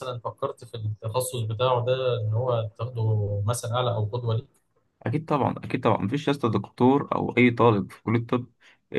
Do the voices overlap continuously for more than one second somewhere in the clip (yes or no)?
no